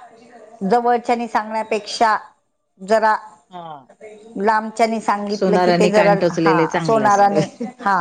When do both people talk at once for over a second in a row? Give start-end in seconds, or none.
5.4-7.4